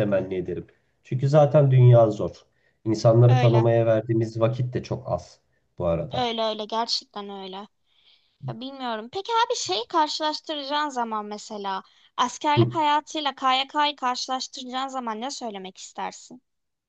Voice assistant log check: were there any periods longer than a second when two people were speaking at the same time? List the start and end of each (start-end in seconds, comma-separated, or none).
none